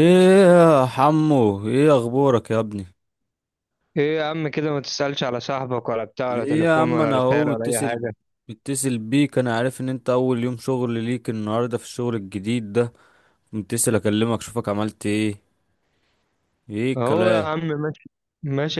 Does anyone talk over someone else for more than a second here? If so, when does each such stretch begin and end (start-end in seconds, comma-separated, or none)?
6.3-8.0